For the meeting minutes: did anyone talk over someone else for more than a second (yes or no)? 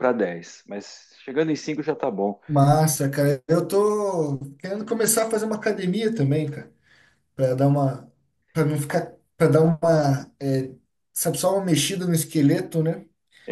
no